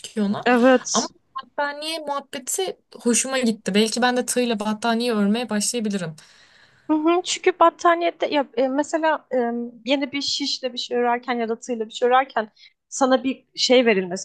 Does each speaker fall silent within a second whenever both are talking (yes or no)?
yes